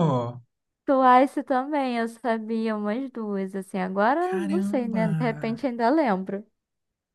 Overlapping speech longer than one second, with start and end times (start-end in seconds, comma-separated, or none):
4.2-5.6